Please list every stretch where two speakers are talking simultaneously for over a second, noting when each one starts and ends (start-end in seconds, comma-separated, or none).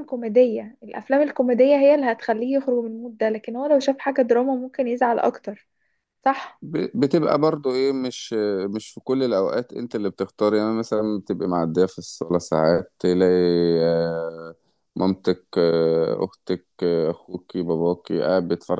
none